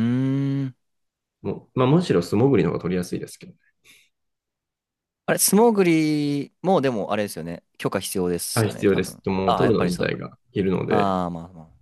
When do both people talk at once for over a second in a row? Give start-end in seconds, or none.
8.5-10.1